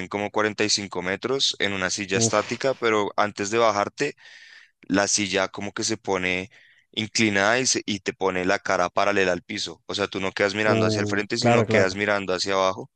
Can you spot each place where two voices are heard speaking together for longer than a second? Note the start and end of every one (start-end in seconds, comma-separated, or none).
10.6-11.9